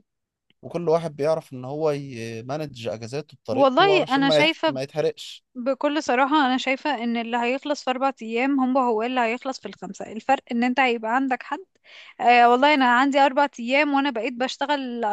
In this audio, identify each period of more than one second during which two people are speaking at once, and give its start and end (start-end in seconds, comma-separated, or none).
3.5-4.8